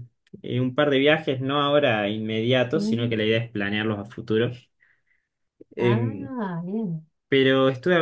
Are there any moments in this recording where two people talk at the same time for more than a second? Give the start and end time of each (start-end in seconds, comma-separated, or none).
none